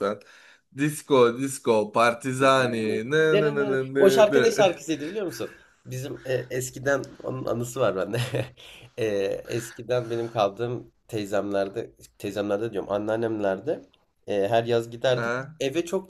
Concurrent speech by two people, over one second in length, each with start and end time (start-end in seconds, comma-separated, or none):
2.4-4.5